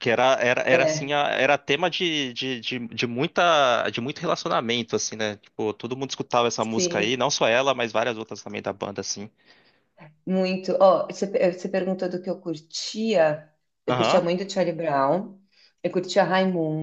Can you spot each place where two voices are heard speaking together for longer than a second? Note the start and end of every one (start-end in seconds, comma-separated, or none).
none